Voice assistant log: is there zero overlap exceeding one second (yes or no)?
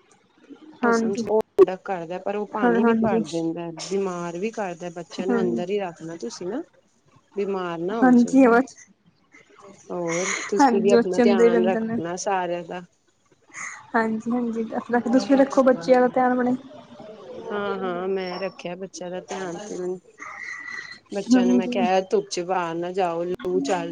no